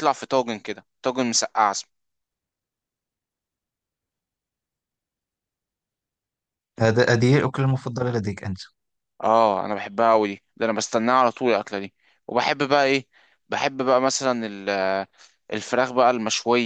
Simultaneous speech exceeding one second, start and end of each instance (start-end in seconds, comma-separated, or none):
none